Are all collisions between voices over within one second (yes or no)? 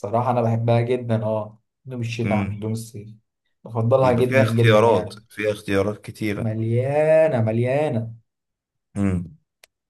no